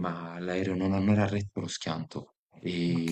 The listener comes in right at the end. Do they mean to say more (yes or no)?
no